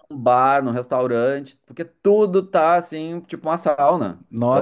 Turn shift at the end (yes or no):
yes